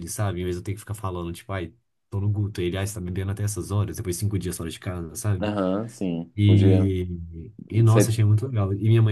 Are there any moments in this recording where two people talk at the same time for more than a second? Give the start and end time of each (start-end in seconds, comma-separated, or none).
none